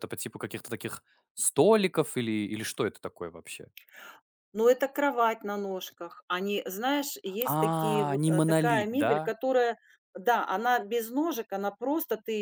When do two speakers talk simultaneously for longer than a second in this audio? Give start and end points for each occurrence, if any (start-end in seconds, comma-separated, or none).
7.5-9.1